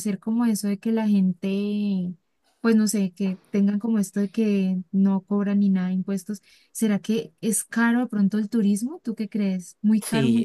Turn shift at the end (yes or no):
yes